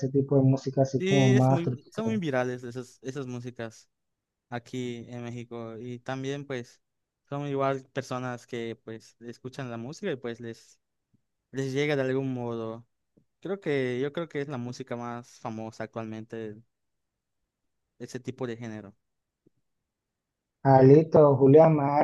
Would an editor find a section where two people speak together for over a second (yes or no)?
yes